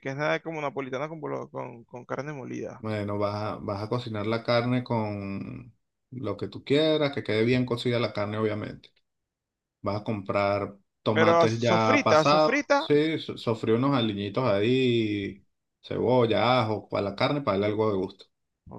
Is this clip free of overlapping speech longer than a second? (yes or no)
no